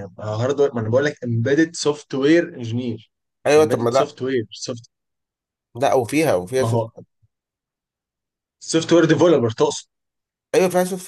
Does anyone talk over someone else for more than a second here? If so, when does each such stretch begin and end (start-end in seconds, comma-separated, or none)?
none